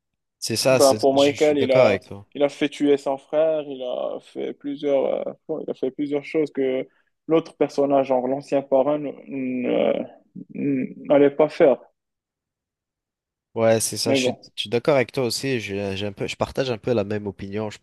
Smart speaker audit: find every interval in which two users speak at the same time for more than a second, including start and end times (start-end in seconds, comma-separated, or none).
0.7-2.3